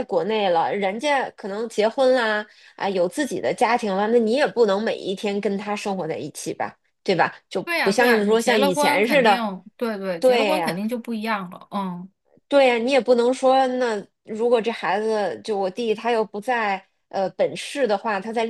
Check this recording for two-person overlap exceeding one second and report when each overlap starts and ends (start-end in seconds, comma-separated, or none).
7.6-9.4